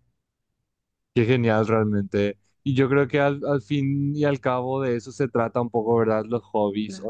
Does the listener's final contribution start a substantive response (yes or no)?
no